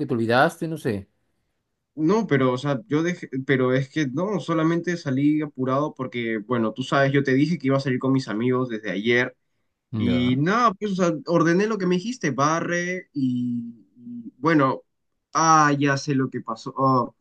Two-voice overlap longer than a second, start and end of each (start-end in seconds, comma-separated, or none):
none